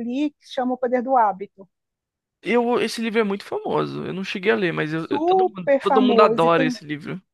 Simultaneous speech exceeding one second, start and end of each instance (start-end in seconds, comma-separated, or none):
5.0-6.8